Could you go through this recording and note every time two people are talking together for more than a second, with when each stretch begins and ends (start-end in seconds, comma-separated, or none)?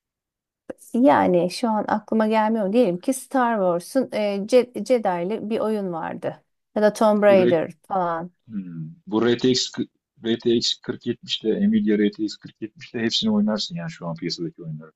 none